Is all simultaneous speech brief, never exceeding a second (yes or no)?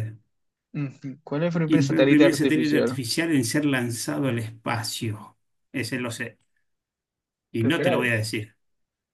no